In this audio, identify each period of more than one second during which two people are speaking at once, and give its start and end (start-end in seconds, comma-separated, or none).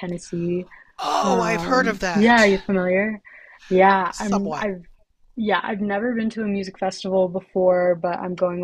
1.2-2.5